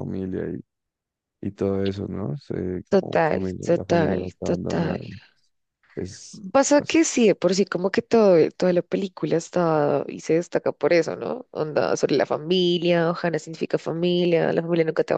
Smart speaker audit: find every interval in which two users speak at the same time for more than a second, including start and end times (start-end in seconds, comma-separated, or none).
2.9-5.0